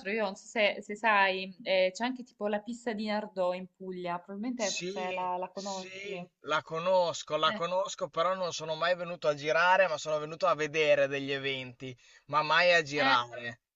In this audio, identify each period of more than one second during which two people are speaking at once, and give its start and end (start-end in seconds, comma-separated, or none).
4.5-5.9